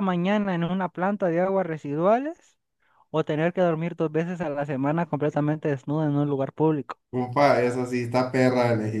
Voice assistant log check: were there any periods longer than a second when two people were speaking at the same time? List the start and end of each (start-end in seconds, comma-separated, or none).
none